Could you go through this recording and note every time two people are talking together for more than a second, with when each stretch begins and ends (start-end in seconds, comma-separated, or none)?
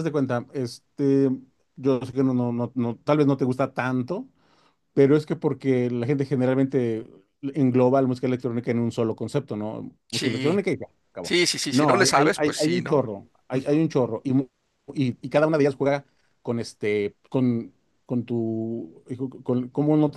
11.2-13.0